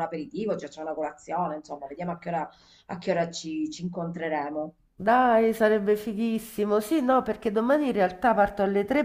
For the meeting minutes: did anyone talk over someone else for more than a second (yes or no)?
no